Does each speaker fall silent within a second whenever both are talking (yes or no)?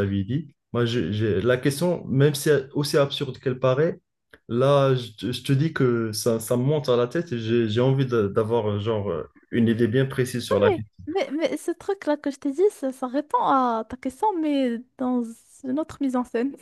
yes